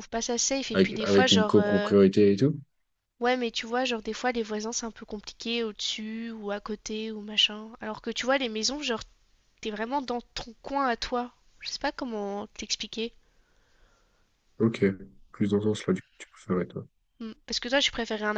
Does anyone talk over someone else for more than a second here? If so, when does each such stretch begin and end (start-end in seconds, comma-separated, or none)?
0.7-1.9